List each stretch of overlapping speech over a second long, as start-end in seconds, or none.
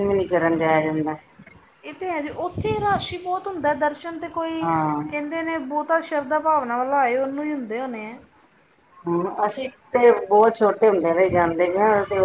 none